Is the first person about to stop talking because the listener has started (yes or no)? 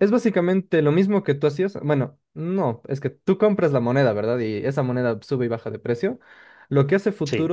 no